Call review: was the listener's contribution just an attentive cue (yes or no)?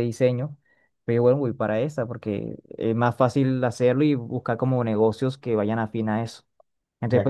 no